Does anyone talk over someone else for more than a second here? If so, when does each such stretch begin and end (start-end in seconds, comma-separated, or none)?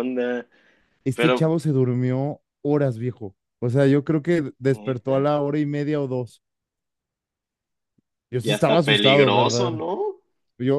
8.4-9.8